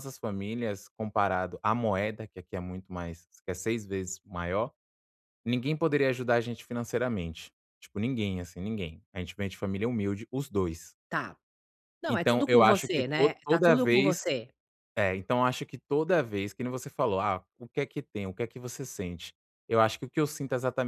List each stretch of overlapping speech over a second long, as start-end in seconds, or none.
12.1-14.2